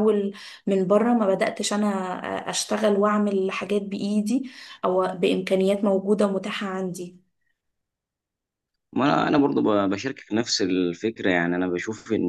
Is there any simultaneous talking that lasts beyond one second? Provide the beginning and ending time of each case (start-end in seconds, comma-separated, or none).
none